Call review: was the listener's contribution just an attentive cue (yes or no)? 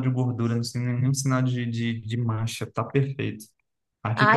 no